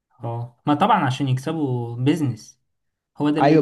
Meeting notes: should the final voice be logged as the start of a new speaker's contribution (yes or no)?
yes